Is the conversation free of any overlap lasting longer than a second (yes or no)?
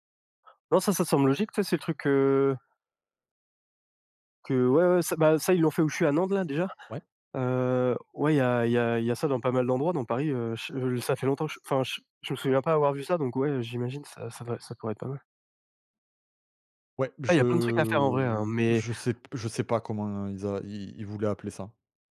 no